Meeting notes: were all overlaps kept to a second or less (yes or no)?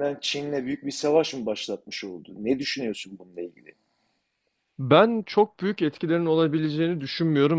yes